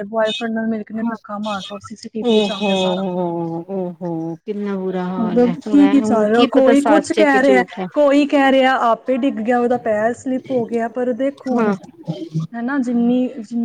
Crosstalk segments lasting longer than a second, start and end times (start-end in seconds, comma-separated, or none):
5.2-7.8